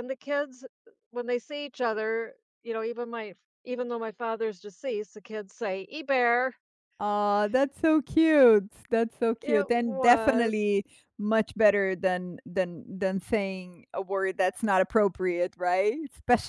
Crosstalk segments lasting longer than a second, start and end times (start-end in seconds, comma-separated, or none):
9.4-10.7